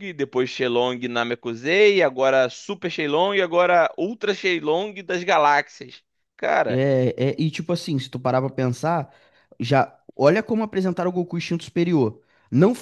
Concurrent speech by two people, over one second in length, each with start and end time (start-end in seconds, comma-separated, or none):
none